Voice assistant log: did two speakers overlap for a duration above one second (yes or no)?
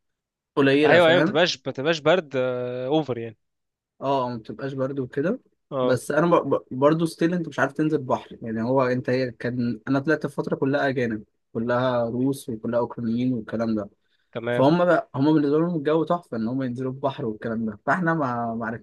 no